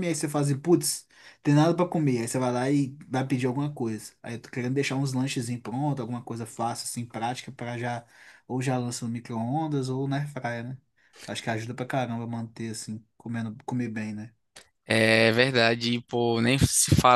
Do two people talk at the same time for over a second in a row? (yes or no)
no